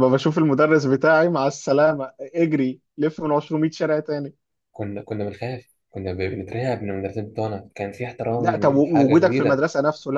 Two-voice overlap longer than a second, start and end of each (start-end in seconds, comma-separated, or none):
8.3-9.6